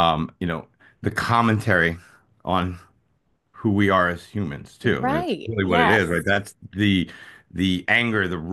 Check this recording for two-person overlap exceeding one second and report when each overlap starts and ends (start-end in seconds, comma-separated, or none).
4.8-6.3